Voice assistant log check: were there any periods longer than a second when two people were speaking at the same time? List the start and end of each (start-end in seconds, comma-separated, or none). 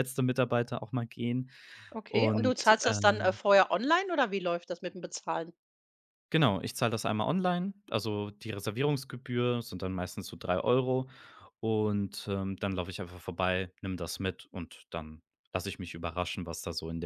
2.1-3.4